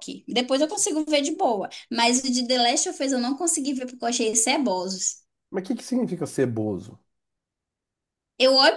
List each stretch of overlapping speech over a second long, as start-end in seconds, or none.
none